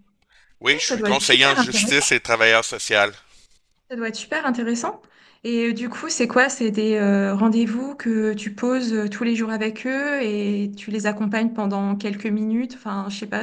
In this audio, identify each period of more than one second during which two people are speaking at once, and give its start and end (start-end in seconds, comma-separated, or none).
0.7-2.1